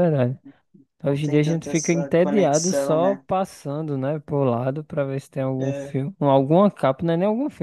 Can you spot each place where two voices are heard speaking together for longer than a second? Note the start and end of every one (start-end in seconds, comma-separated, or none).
1.0-3.2